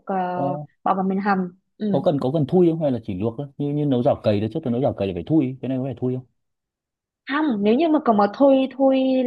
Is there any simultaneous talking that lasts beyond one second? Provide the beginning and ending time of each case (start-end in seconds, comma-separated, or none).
none